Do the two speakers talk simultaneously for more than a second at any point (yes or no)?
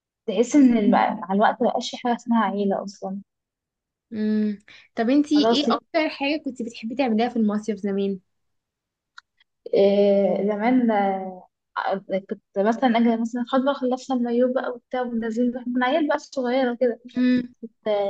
no